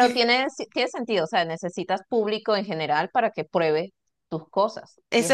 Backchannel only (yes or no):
no